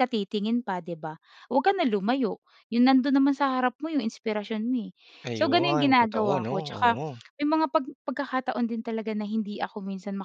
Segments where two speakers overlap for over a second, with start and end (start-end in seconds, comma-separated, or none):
5.4-7.0